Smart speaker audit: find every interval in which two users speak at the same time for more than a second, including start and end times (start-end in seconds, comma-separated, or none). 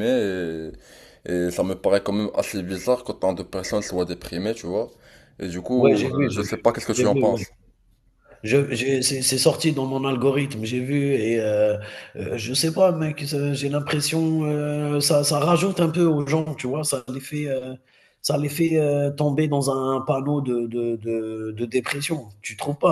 5.8-7.4